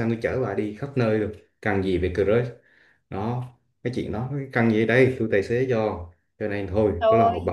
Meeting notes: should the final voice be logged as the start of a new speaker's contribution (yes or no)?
no